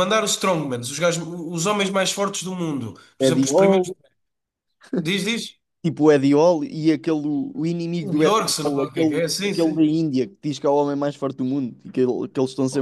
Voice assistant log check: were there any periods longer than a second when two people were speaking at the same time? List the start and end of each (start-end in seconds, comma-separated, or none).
8.0-9.9